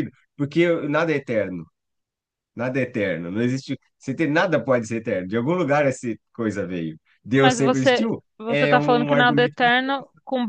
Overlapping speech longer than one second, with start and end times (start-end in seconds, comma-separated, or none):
7.3-9.7